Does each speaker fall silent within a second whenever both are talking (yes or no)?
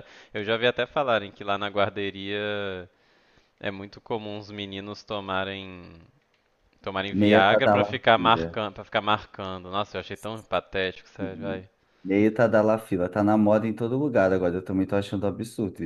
no